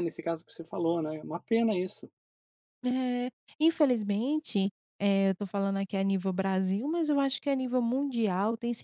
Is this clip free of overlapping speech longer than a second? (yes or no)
yes